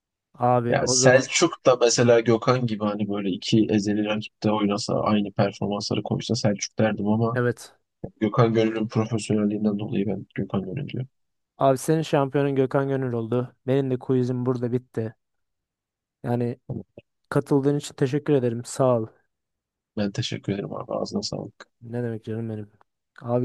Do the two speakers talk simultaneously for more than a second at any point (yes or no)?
no